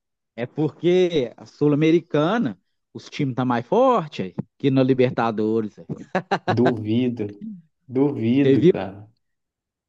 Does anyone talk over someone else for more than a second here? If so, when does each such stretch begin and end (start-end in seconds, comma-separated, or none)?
none